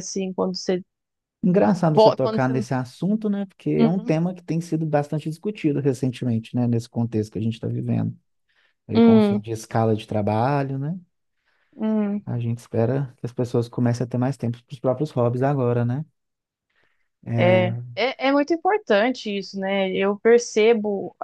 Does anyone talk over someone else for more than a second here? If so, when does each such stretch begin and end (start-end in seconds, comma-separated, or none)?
none